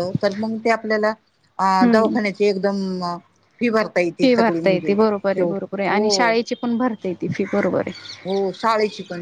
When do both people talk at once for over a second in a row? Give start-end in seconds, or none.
none